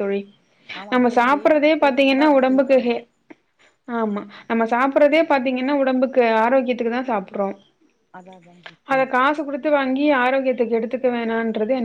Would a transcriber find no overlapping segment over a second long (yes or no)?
no